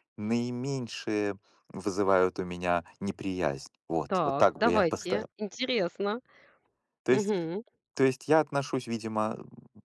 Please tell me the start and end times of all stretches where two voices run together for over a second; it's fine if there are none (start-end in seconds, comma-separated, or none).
4.1-5.3